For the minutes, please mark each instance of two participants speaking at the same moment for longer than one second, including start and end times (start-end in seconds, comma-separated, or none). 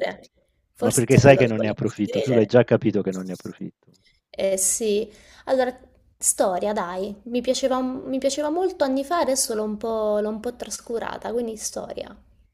0.8-2.6